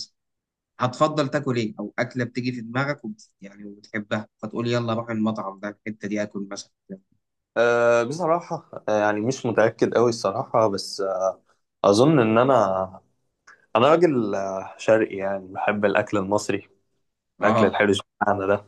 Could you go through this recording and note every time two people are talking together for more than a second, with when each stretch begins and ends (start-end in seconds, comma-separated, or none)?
none